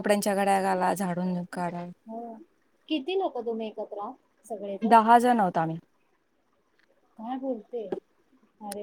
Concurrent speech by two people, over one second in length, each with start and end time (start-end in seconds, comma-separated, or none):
none